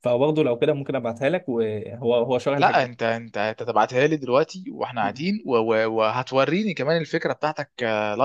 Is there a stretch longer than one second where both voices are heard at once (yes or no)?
no